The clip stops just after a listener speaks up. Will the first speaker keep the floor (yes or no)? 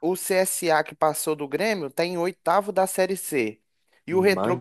yes